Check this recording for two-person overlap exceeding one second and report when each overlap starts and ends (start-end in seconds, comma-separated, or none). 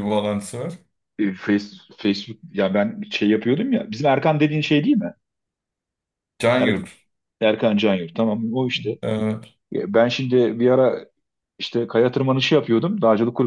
none